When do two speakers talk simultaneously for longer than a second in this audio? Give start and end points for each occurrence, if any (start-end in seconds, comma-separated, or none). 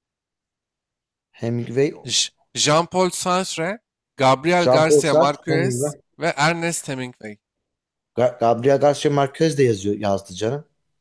4.6-5.9